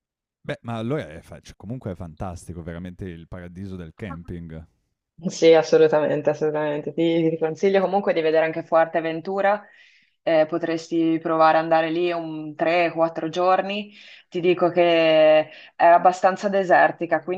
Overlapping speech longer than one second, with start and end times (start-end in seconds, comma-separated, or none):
none